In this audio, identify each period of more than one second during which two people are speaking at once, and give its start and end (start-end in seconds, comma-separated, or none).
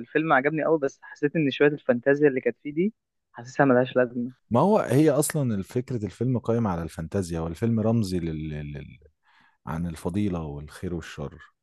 none